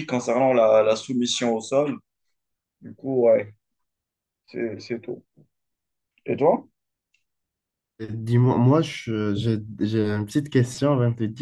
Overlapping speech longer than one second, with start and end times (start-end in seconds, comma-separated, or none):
none